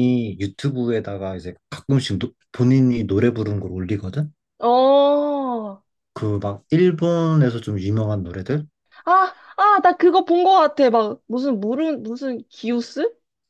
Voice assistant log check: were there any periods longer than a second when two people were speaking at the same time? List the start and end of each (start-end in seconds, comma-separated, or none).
none